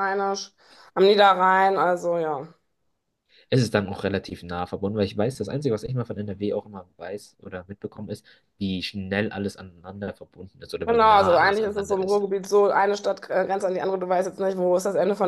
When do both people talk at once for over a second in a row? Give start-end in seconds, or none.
10.8-12.2